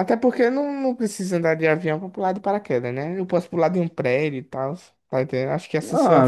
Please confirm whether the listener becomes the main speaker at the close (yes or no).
yes